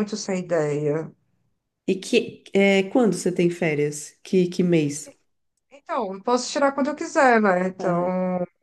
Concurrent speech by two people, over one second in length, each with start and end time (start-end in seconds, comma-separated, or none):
none